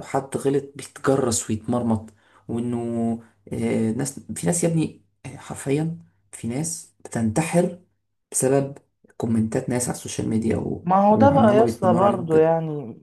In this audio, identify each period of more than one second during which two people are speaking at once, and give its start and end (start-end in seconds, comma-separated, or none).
10.8-12.5